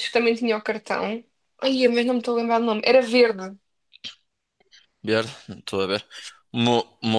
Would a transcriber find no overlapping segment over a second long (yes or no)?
yes